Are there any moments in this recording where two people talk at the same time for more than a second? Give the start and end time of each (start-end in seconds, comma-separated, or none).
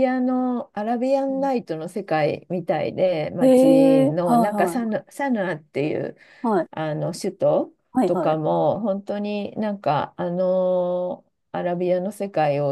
3.4-5.0